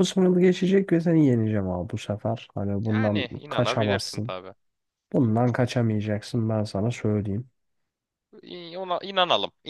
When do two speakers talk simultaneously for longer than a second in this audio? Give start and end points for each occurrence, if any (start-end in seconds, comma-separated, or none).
2.9-4.3